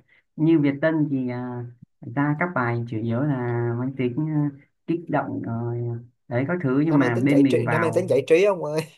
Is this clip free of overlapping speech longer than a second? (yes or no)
no